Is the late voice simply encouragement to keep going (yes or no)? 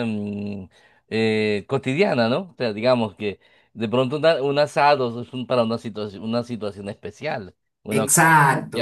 yes